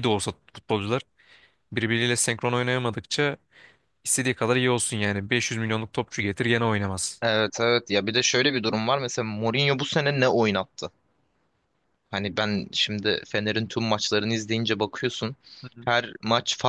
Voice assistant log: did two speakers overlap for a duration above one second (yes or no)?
no